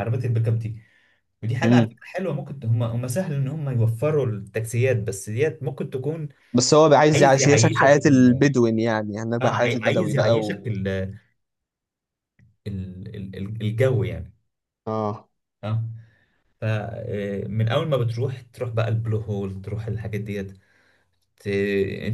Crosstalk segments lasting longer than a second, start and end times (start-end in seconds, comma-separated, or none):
7.1-8.4, 9.4-10.7